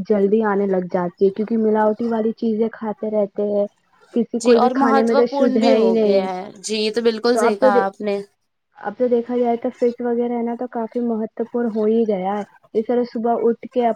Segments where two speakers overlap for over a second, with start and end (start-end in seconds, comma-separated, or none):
4.4-6.3